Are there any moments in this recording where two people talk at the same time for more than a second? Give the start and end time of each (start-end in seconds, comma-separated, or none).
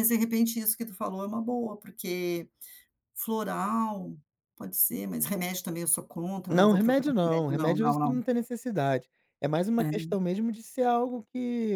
6.5-8.2